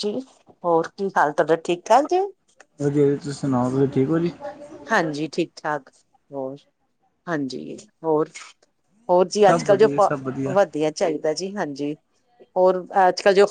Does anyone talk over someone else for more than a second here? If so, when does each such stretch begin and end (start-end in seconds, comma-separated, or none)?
none